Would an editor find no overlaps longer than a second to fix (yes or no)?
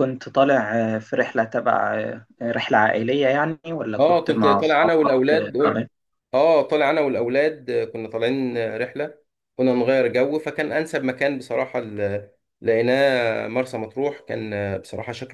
no